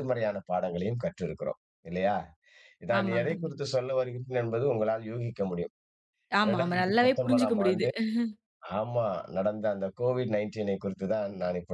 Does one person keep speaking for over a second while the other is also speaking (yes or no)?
yes